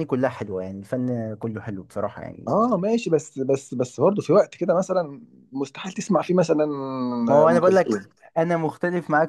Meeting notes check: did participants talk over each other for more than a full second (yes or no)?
no